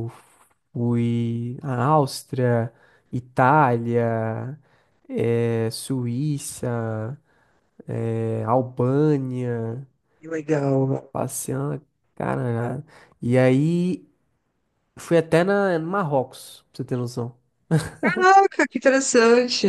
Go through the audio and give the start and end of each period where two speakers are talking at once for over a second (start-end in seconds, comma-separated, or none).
none